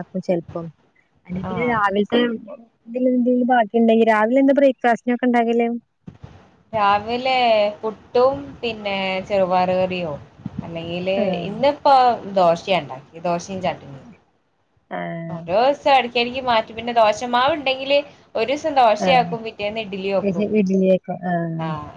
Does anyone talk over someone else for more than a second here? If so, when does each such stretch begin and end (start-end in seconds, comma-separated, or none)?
none